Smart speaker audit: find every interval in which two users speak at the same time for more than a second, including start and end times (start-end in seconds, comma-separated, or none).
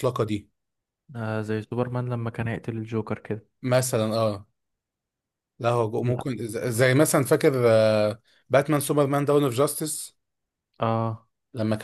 none